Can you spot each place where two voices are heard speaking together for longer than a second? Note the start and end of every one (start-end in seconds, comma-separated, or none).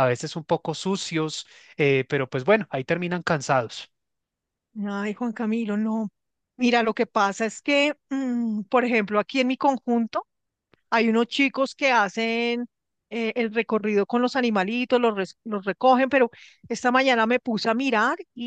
none